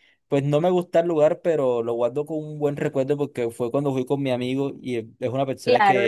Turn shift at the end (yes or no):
yes